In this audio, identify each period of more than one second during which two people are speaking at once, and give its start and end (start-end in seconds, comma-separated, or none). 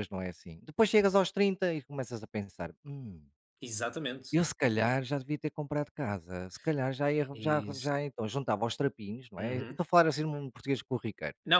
none